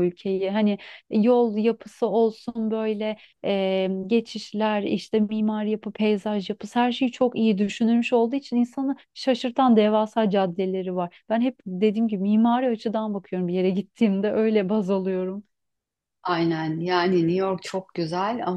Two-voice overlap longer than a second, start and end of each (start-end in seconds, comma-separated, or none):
none